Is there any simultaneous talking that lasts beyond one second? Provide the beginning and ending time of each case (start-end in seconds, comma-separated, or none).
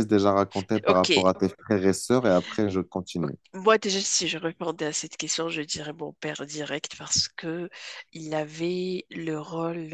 none